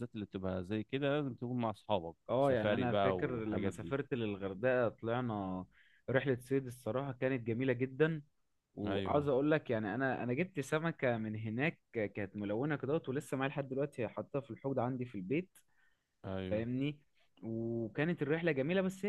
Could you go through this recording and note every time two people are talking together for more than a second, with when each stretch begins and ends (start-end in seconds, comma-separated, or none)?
2.3-3.9